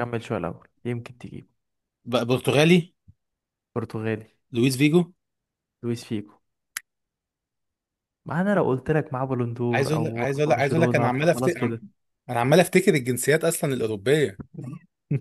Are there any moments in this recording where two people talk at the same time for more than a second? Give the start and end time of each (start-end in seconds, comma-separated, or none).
9.7-11.6